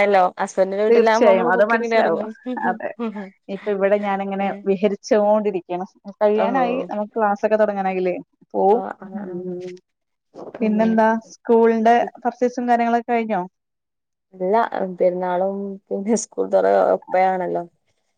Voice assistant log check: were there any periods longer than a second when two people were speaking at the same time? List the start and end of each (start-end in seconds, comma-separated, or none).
0.9-2.2